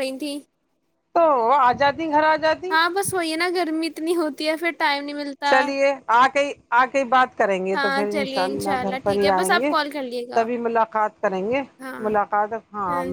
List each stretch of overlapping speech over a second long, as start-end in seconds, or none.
7.8-9.7